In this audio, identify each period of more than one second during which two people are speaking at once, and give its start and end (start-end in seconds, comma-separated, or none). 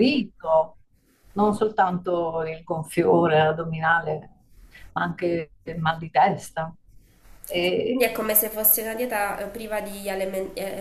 none